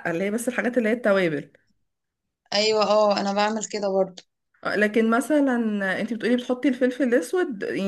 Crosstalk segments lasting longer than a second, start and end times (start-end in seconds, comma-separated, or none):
none